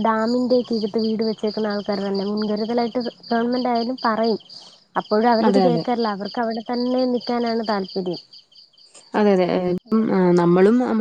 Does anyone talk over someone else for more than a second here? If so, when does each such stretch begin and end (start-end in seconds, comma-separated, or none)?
none